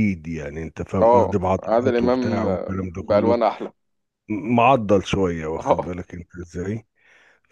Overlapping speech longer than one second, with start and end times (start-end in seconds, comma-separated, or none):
1.0-2.5